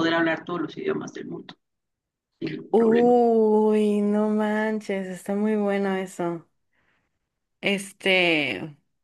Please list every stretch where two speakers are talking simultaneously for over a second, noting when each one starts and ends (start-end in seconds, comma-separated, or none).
none